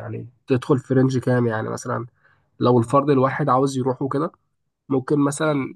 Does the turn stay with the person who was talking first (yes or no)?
yes